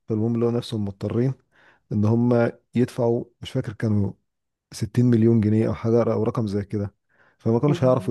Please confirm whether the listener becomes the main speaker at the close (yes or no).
no